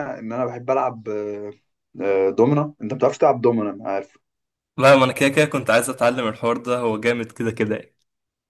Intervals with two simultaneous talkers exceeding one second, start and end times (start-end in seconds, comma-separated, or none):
none